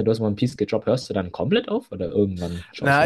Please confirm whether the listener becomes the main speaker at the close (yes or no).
yes